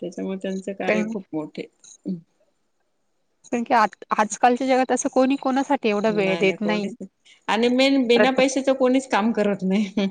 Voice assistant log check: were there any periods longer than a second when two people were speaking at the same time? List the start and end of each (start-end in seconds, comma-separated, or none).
none